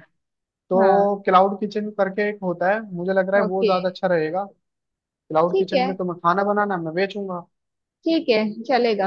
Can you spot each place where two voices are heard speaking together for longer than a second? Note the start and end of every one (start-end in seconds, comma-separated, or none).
none